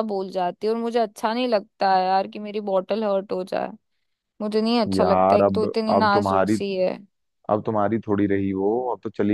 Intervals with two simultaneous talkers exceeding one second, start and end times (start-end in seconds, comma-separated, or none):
5.0-6.6